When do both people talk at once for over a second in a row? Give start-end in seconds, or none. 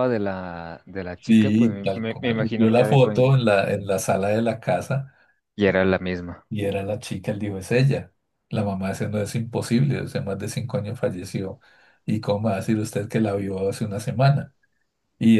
1.2-3.1